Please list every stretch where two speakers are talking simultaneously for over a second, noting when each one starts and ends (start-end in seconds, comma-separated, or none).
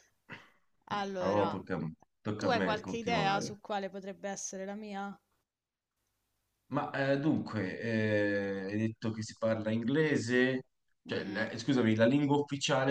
2.4-3.6